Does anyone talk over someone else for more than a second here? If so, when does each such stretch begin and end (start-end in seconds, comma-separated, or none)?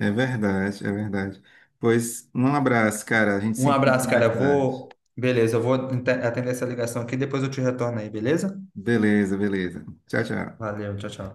3.6-4.9